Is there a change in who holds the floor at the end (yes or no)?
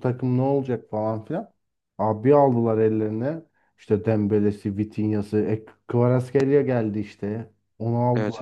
no